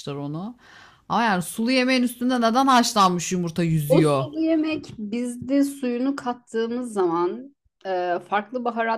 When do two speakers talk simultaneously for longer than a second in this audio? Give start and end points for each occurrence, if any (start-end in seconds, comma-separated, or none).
none